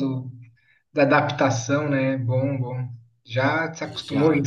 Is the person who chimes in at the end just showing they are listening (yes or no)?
yes